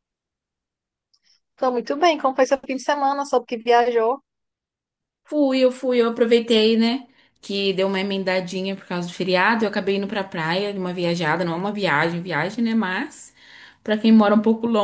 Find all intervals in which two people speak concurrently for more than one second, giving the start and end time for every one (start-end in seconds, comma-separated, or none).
none